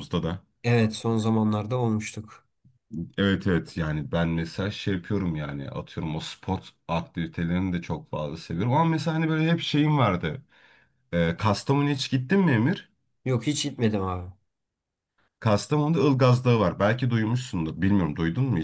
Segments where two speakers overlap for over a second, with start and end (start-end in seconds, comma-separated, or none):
none